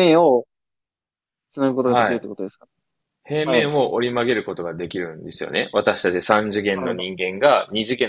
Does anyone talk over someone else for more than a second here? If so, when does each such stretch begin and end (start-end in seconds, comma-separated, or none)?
none